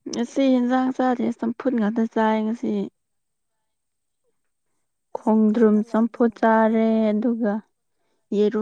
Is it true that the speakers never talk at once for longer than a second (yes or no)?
no